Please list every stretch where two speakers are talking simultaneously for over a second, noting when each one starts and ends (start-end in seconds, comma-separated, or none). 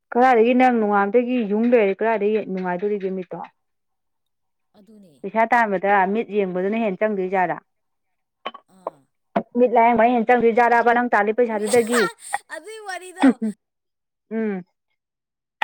none